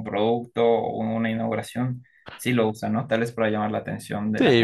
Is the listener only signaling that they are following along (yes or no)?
no